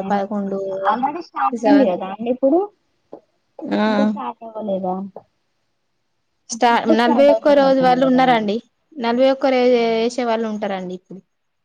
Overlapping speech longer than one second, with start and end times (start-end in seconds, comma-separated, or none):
6.8-8.5